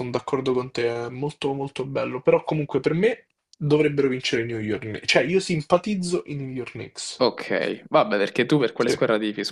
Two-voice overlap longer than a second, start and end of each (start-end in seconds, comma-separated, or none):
none